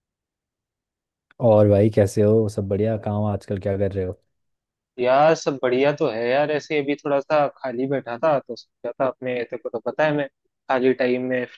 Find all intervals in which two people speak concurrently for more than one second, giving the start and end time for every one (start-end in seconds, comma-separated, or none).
none